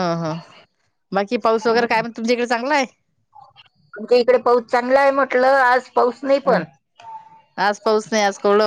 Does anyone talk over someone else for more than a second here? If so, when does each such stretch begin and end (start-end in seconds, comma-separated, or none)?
none